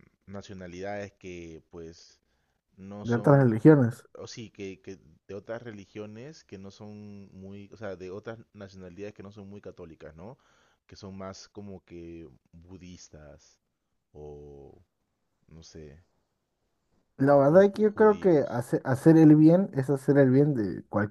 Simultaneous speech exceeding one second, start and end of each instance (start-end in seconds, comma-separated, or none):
17.3-18.6